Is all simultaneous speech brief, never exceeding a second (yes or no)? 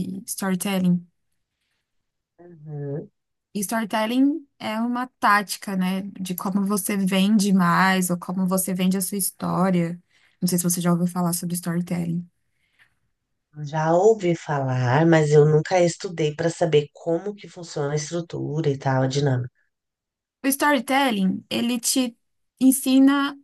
yes